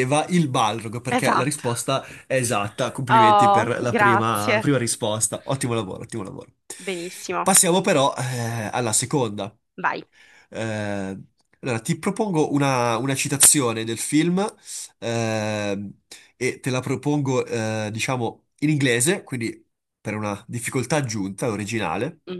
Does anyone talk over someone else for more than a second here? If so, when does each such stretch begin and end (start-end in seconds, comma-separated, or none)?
3.1-4.6